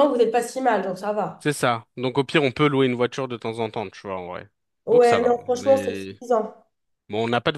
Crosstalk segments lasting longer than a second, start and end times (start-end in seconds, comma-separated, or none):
4.9-6.2